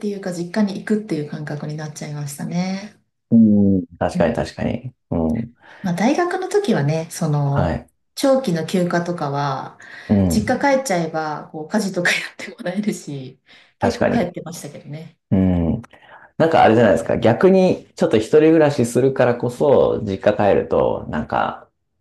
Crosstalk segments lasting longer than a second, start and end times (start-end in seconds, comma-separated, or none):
none